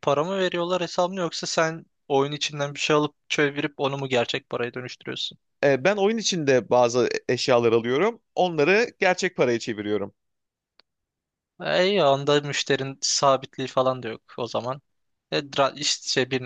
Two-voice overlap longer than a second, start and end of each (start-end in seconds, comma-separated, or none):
none